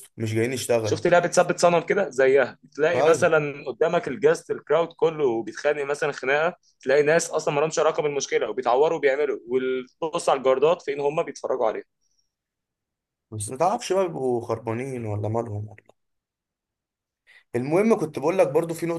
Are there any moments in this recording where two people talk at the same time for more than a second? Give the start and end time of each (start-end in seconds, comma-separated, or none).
none